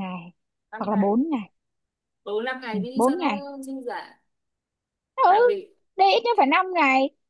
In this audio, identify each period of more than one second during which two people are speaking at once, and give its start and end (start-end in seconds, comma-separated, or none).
none